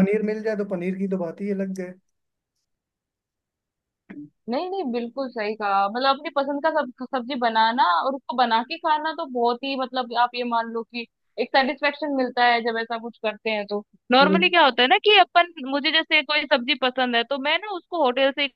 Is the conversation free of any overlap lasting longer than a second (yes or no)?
yes